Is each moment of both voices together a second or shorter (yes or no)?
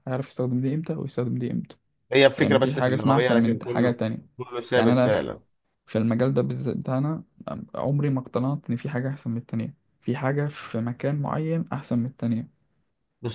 no